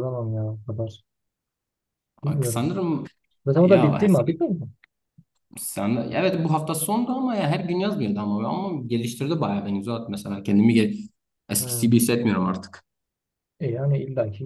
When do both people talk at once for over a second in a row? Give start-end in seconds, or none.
none